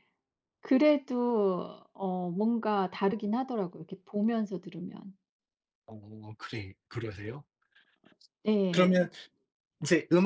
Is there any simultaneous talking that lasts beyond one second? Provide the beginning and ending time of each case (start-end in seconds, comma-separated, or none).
none